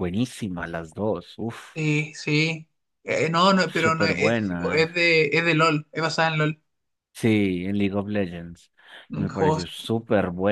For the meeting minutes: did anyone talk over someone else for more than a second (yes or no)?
yes